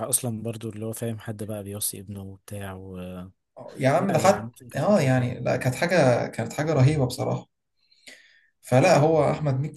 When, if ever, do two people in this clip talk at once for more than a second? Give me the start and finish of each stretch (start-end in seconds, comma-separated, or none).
4.0-5.3